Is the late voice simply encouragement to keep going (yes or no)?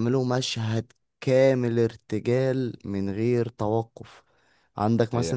yes